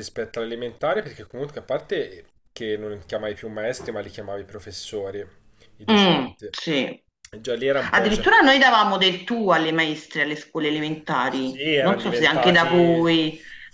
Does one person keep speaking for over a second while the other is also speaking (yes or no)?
yes